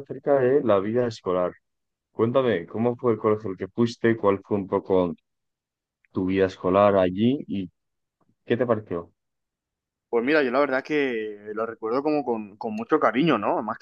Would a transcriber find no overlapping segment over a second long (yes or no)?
yes